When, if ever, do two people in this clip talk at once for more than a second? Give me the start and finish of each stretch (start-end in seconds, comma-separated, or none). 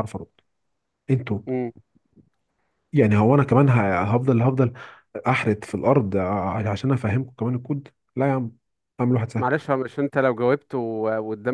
none